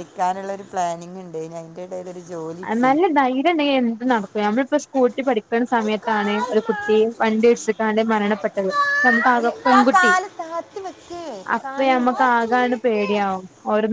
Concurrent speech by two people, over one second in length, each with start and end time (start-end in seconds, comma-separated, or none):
11.6-13.1